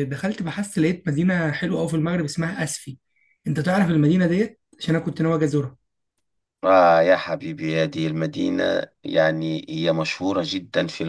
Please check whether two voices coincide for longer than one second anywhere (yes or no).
no